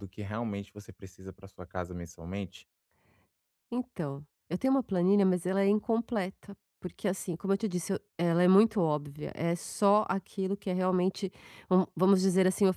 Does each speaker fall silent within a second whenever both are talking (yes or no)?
yes